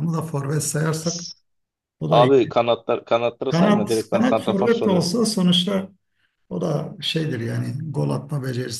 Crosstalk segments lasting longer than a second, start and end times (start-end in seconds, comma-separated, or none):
3.5-5.1